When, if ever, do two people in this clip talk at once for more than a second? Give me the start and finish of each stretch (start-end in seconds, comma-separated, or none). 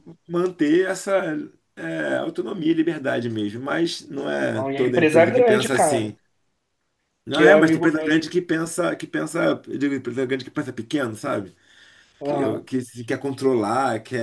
4.4-6.1